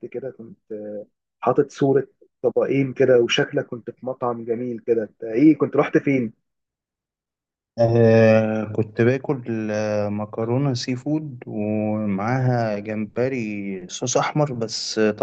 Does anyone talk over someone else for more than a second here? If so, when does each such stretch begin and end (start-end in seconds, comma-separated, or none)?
none